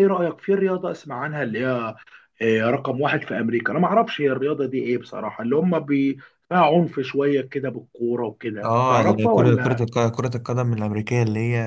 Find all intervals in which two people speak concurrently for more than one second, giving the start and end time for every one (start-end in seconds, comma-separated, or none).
8.6-9.8